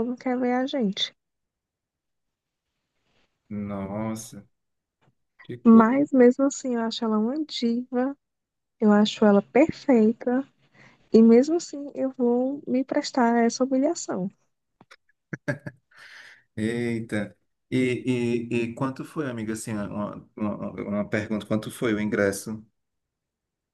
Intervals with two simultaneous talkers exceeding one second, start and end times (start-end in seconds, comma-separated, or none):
none